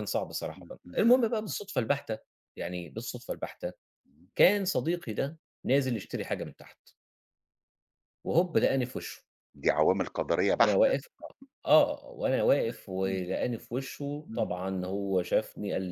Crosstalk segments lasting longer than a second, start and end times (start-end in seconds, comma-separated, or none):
none